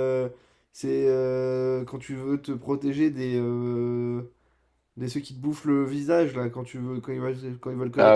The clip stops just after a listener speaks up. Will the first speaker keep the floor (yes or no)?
no